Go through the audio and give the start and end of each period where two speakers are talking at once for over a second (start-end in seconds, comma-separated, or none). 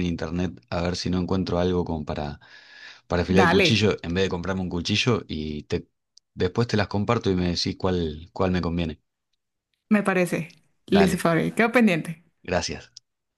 none